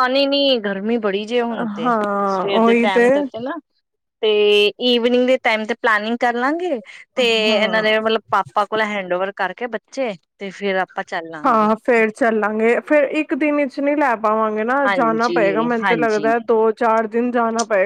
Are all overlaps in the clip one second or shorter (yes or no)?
no